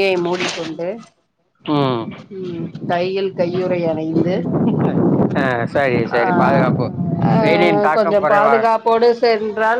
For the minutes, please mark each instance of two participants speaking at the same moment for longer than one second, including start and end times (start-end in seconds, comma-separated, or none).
7.4-8.8